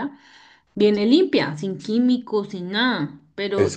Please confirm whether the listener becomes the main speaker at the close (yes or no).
no